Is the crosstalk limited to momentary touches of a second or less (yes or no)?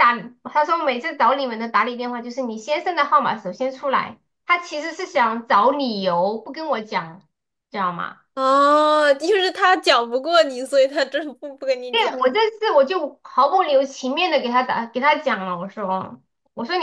yes